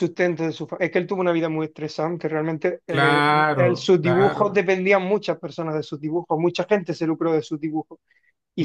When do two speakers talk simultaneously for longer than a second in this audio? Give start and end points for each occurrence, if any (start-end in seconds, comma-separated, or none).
2.9-4.7